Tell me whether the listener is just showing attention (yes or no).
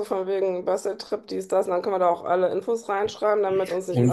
no